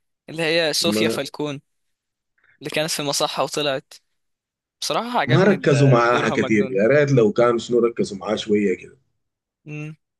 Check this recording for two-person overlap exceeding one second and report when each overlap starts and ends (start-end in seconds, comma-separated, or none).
5.3-6.8